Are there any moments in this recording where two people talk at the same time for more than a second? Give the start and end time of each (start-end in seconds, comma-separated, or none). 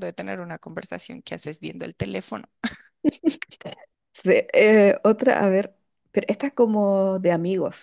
none